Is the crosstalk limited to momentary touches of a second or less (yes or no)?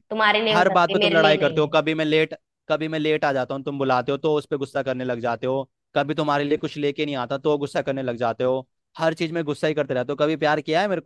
no